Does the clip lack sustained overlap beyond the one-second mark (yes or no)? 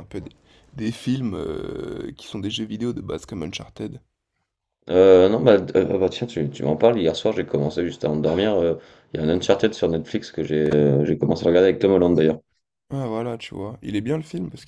yes